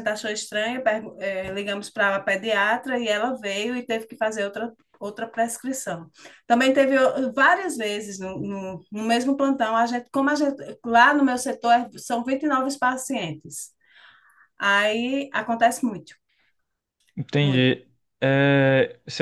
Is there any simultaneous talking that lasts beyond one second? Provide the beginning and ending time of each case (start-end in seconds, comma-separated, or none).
none